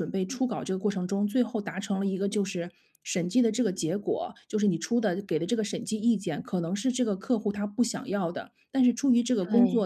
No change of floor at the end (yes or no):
yes